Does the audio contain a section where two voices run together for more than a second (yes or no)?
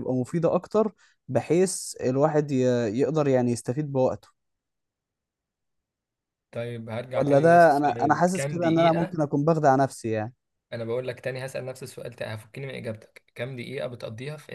yes